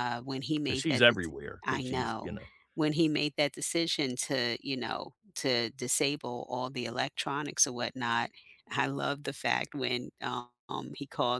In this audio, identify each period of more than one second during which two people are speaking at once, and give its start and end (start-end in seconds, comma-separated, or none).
0.7-2.3